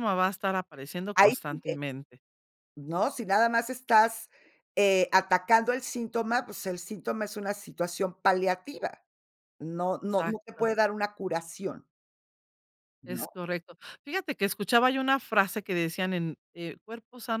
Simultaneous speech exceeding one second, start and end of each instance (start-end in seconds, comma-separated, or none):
none